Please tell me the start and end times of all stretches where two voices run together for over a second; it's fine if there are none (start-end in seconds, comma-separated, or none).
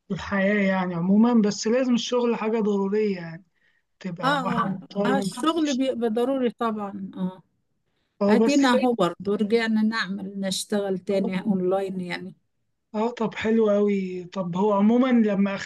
4.2-6.0